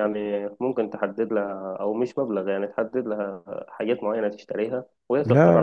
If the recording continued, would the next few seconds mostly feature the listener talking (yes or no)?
yes